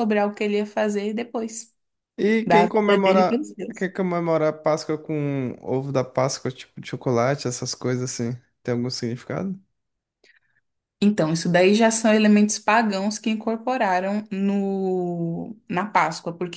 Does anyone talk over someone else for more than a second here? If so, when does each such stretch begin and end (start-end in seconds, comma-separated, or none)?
2.4-3.9